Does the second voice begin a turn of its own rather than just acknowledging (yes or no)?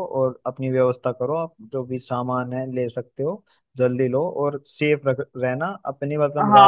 yes